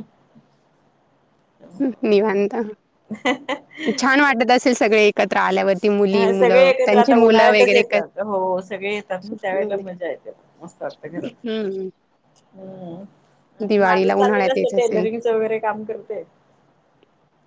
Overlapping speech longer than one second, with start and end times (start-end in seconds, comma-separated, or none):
6.1-8.1, 13.7-15.1